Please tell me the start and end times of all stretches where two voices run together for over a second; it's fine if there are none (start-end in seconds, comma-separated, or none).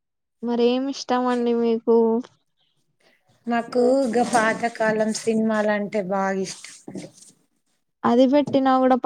none